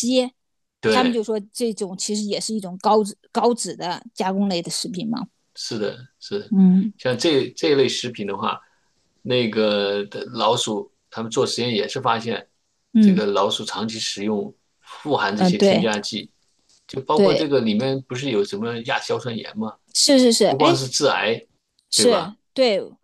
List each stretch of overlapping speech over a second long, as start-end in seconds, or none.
none